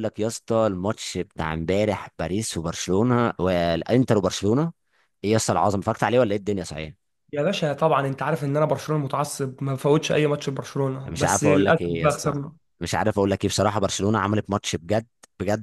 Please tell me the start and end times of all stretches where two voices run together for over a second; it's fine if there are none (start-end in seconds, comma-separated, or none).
11.1-12.3